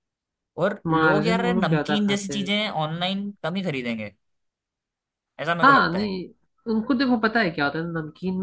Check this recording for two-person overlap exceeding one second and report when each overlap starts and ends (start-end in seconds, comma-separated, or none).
0.9-2.5